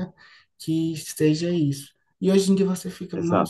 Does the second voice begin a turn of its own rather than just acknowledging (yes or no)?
no